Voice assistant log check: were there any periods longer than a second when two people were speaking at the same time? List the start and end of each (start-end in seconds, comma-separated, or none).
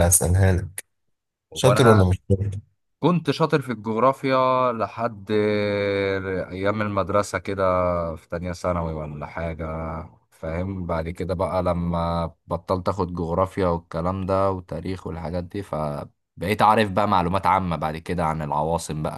none